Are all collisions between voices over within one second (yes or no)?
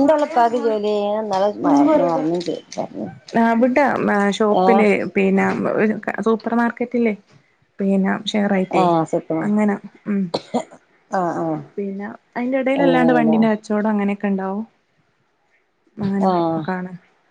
yes